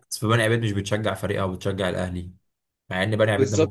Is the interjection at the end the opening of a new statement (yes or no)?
no